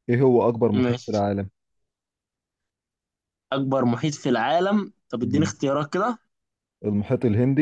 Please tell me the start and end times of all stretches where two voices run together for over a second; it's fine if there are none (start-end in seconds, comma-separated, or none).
none